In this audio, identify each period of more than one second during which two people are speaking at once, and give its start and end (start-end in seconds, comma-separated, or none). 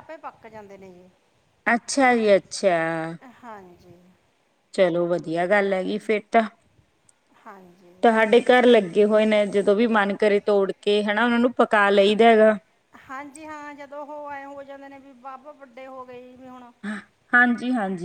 none